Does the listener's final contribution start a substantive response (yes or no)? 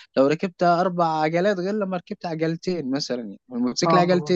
no